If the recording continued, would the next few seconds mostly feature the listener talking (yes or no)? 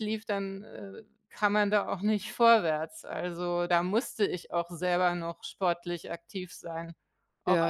yes